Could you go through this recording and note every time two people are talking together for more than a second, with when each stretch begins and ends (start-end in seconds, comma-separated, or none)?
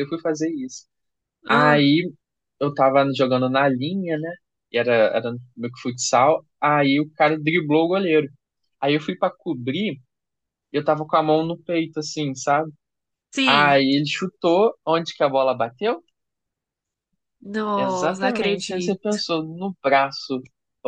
17.7-19.2